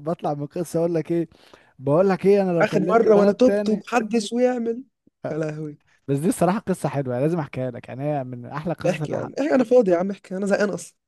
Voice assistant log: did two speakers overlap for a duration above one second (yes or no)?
yes